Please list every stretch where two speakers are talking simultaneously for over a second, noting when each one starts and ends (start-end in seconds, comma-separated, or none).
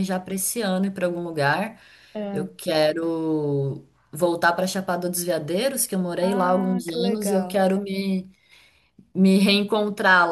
6.2-7.6